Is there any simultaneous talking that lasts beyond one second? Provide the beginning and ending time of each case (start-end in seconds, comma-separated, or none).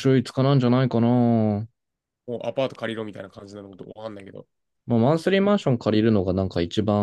none